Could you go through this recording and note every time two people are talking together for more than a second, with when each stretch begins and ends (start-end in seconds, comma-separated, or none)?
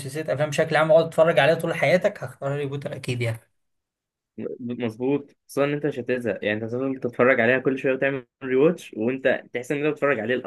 none